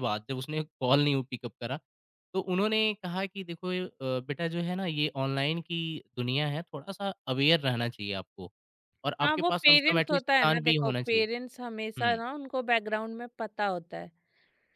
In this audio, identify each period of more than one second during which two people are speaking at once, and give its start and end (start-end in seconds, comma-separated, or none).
9.2-11.3